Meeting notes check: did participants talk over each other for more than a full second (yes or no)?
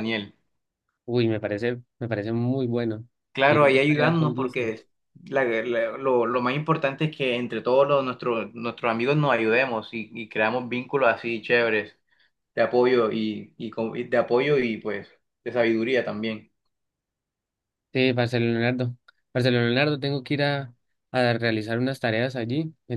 yes